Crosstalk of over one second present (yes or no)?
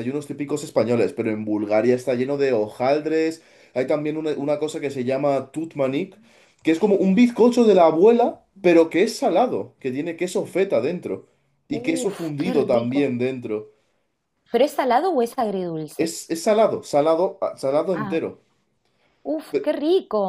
yes